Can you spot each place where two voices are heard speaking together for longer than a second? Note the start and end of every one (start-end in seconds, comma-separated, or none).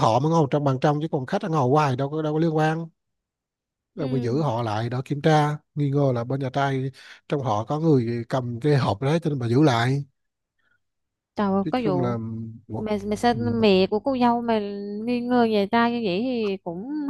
none